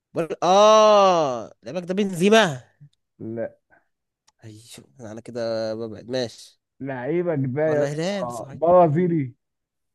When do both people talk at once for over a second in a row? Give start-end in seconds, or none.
7.7-9.0